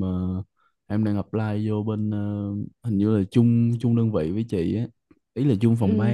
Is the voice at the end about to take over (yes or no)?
yes